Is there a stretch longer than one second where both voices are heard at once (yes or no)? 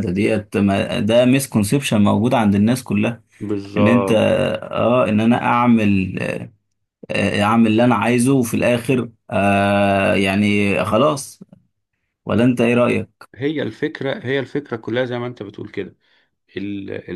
no